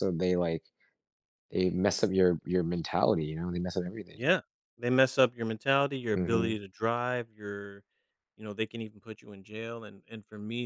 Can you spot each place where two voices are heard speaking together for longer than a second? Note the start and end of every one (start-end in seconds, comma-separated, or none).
none